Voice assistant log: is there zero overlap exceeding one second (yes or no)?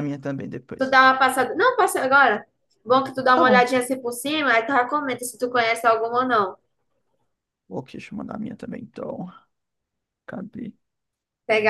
yes